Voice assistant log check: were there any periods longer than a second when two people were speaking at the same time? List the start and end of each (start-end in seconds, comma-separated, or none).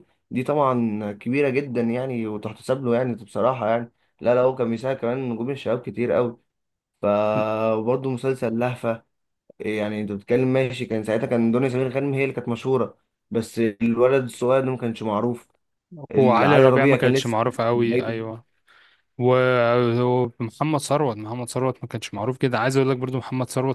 16.4-18.1